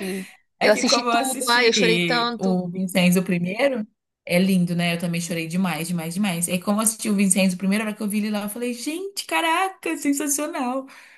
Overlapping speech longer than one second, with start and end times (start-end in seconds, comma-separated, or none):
0.6-2.6